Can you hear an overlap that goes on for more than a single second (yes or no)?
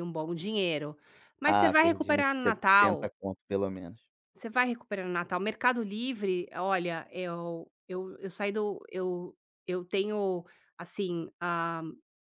yes